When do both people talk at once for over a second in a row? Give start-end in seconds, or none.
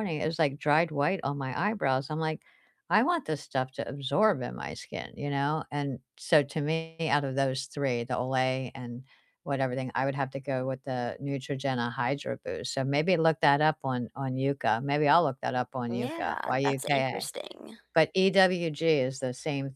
15.9-17.3